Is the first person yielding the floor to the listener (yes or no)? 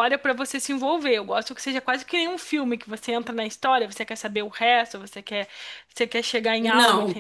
yes